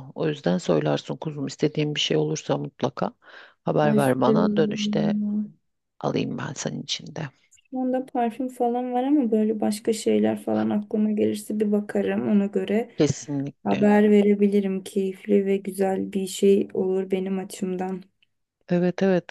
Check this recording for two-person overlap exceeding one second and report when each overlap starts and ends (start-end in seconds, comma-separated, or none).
3.8-5.1